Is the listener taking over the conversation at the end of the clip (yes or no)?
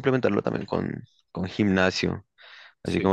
no